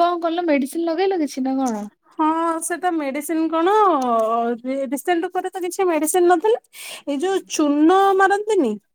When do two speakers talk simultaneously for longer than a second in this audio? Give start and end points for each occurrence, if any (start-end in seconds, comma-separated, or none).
none